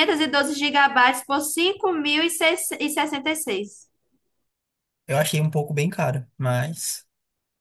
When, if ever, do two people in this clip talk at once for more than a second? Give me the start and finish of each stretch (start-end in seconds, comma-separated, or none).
none